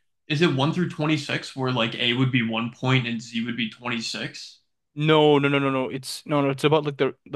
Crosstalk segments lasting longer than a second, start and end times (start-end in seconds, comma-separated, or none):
none